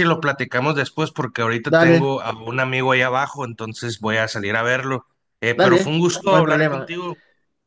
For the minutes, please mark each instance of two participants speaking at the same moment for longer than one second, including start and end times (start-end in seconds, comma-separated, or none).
5.5-6.9